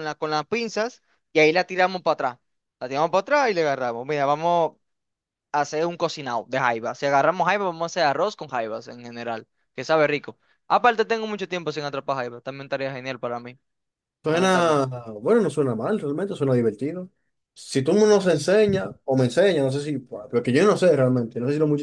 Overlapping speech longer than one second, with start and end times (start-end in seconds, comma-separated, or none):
none